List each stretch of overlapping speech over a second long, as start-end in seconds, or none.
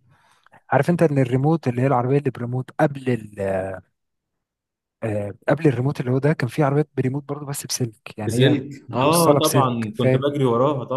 8.3-10.3